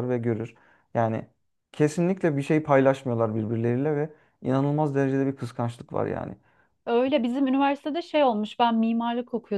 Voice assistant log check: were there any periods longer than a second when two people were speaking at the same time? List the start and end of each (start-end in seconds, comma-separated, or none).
none